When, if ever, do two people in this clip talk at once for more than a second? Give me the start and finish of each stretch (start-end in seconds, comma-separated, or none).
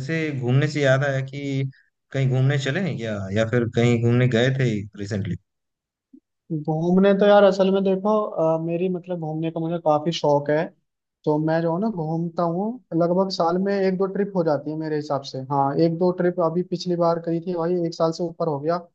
none